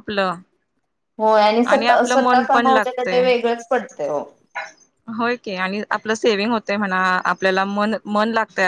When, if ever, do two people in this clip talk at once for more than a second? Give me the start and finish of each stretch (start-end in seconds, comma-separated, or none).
1.9-3.2